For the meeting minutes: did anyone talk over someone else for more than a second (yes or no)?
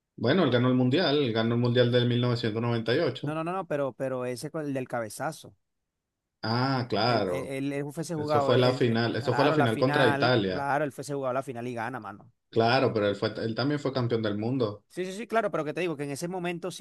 yes